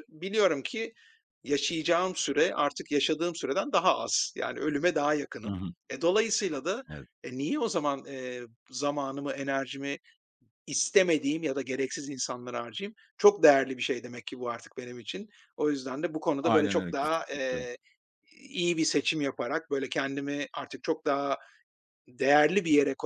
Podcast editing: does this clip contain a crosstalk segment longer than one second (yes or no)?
yes